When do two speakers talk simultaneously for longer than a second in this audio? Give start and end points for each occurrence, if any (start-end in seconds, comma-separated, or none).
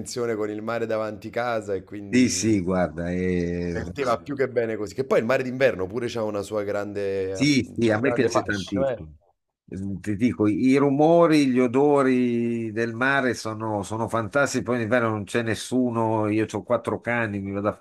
7.3-9.0